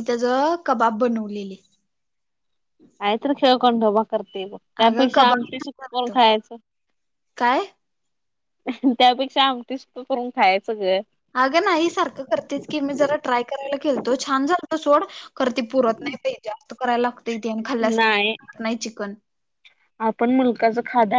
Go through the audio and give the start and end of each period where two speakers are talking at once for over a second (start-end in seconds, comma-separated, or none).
4.9-6.1